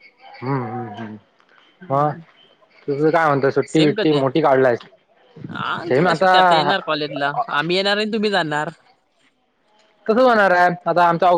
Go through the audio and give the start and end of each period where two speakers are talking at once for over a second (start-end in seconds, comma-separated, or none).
none